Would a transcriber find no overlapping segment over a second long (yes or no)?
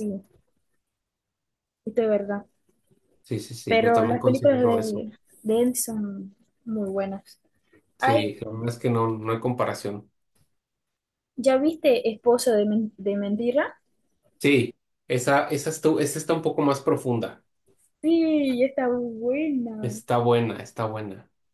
no